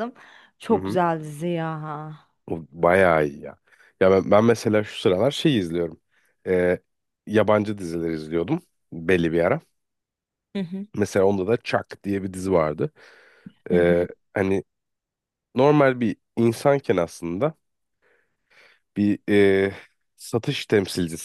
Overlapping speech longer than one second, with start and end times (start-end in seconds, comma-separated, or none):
none